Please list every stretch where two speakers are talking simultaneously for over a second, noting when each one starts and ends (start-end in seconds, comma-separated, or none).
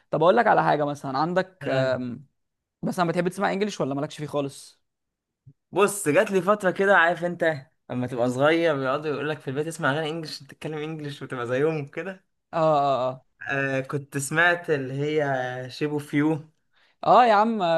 none